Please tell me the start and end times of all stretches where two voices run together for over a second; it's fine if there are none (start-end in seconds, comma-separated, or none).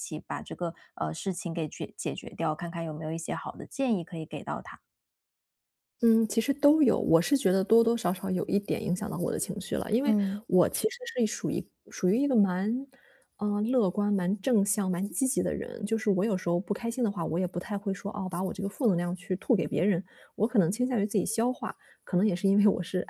none